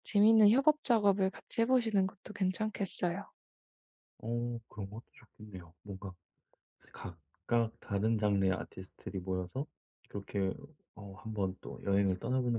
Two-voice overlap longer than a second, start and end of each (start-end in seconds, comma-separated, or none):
none